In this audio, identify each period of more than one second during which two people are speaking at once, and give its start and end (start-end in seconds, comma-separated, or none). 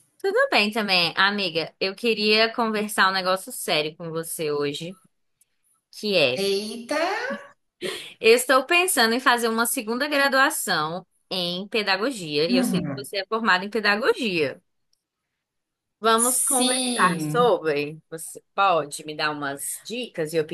16.2-17.5